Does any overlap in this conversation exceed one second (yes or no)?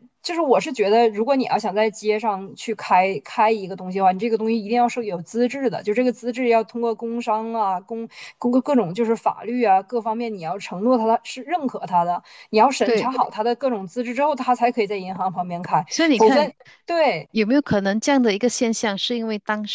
no